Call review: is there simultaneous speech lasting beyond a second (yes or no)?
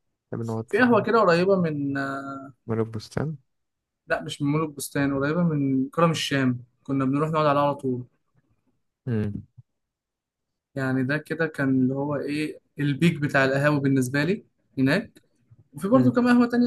no